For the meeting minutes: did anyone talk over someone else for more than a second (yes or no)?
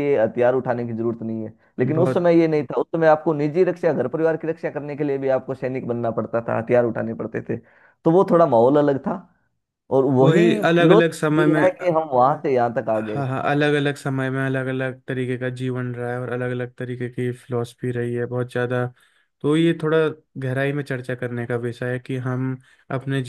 yes